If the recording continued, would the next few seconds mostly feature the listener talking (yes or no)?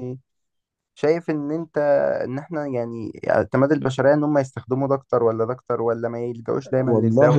yes